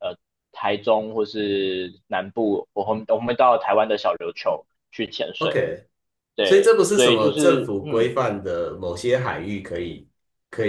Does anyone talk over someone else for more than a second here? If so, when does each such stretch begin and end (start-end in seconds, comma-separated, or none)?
6.4-8.1